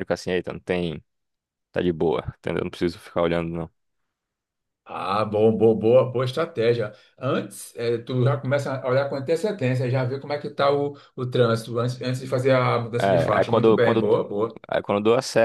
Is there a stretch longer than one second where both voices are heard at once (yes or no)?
yes